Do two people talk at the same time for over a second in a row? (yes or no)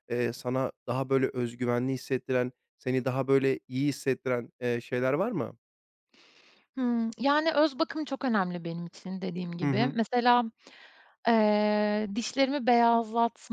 no